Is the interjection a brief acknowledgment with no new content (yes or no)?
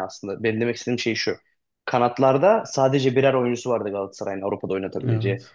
yes